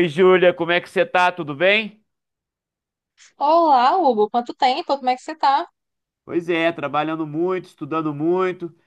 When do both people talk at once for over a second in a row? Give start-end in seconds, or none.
none